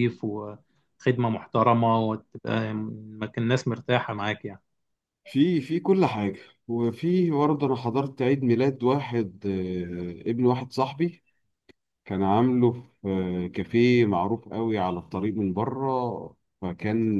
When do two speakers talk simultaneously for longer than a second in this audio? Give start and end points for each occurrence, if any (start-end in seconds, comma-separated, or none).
none